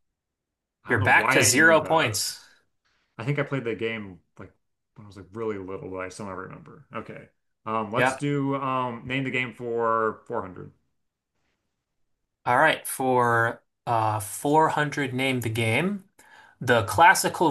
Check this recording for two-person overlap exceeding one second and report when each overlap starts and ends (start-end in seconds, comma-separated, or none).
0.9-2.2